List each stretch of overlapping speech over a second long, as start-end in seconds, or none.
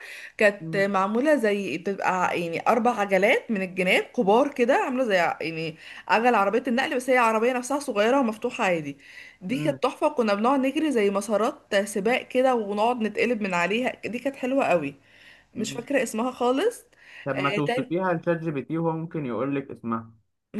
none